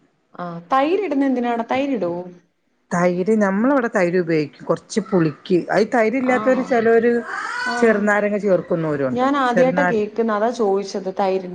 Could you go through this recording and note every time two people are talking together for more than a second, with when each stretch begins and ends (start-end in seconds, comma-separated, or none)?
none